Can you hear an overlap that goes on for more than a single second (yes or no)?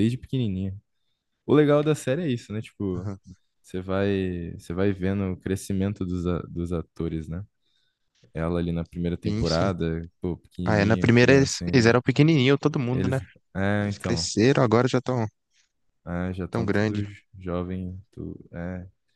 yes